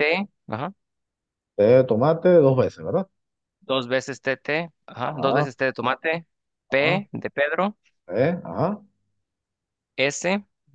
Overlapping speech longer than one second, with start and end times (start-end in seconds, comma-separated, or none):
none